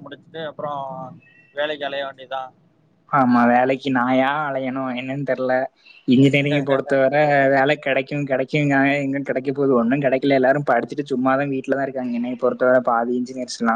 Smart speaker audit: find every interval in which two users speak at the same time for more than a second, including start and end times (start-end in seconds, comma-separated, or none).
none